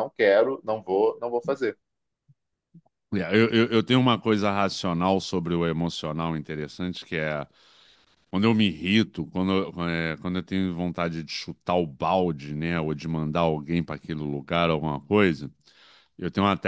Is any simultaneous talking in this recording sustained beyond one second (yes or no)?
no